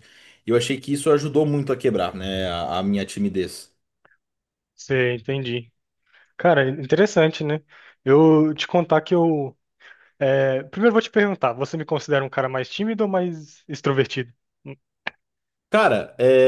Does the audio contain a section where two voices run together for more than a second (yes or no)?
no